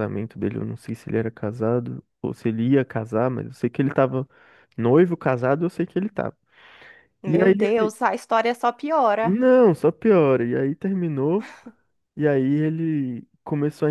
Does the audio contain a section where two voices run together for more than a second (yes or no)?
no